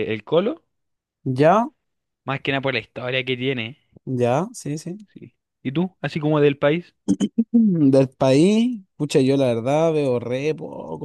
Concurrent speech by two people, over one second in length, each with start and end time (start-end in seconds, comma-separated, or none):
none